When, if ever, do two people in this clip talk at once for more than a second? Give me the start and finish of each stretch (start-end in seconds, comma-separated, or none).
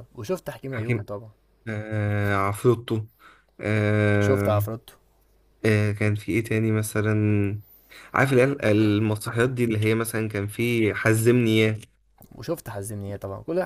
none